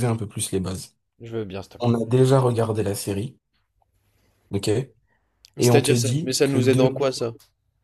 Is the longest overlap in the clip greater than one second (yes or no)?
yes